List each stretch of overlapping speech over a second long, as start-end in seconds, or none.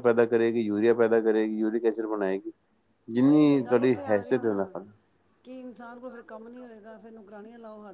3.2-4.6